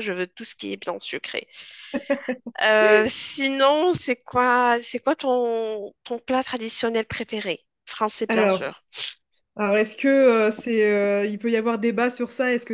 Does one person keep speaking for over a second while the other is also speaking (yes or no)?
no